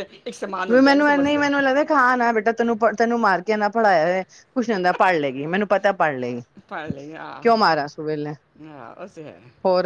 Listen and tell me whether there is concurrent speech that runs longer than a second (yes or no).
no